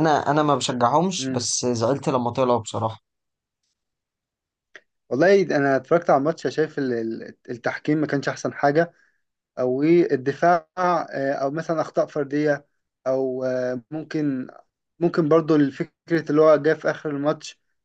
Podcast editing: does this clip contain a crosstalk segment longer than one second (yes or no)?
no